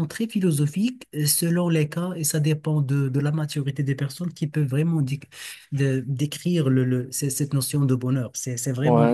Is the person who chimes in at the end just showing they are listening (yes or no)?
no